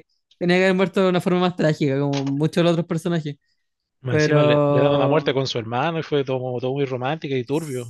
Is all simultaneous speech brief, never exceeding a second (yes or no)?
no